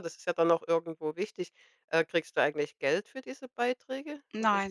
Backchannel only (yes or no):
no